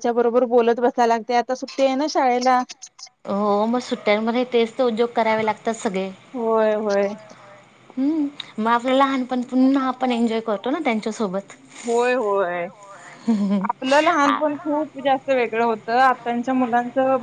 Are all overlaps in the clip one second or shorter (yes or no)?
yes